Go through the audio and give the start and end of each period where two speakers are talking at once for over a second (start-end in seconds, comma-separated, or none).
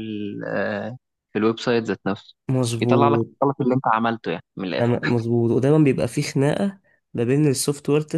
none